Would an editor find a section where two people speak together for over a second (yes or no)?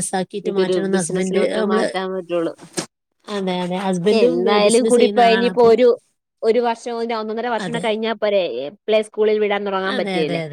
yes